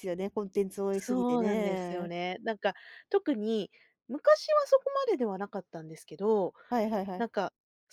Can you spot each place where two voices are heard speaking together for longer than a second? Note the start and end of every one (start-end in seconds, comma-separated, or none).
0.9-2.1